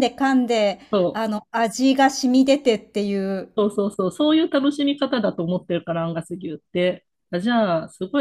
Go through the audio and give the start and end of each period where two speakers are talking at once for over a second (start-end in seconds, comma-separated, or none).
none